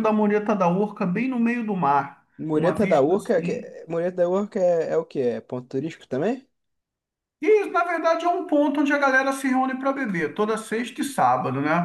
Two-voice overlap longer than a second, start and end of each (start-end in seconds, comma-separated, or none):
2.4-3.7